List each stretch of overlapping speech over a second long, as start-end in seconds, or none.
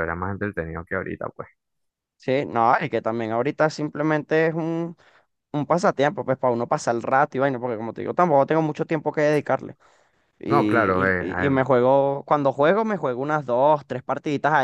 10.5-11.7